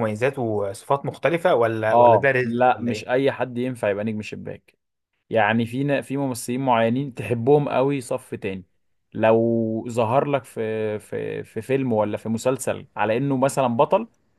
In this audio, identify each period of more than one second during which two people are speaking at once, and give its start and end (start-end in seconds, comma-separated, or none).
1.9-3.3